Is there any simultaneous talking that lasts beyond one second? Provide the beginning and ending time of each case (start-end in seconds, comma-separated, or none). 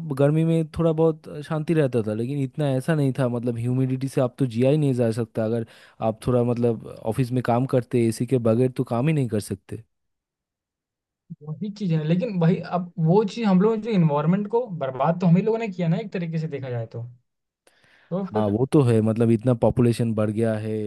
none